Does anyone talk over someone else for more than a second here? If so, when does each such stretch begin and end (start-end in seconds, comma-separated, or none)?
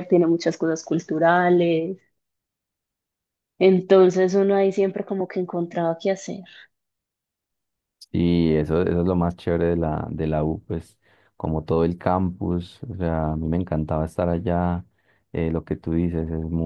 none